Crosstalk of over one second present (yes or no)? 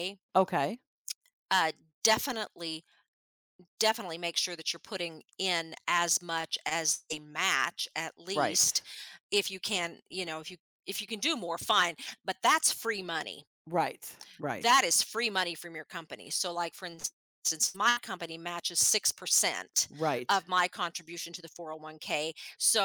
no